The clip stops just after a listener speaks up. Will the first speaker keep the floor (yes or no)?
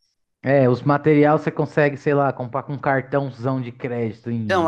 no